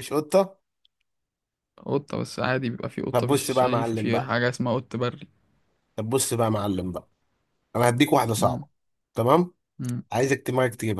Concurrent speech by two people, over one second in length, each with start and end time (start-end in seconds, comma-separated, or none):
3.1-4.3